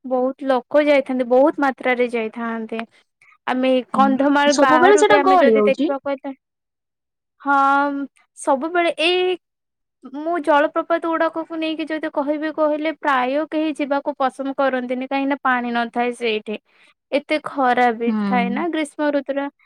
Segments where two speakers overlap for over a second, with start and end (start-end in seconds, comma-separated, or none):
3.9-5.8